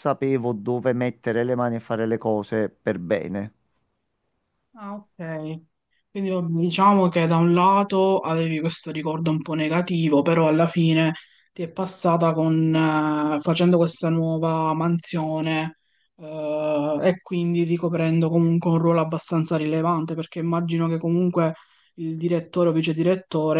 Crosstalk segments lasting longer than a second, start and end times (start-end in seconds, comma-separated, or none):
none